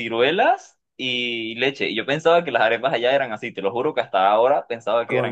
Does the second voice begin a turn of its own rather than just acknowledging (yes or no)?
yes